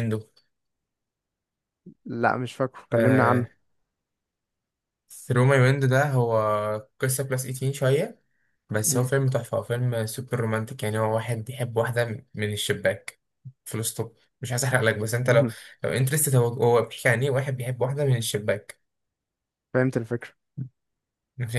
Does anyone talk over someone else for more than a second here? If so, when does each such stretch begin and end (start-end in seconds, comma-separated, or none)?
none